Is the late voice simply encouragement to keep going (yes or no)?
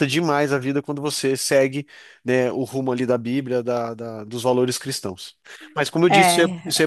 no